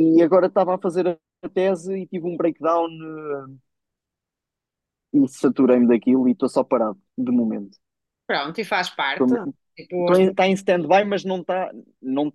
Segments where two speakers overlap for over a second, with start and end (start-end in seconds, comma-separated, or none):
none